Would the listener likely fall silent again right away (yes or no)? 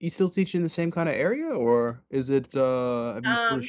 yes